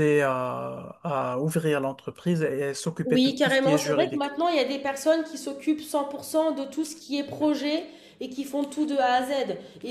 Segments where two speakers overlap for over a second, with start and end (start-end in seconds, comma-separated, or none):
3.0-4.3